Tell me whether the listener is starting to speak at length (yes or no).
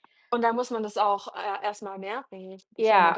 yes